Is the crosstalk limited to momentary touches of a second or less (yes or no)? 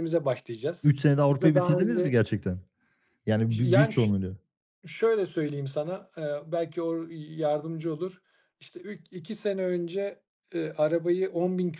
no